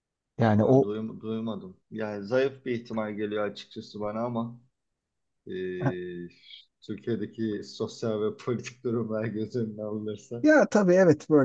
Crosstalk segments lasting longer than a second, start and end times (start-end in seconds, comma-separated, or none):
none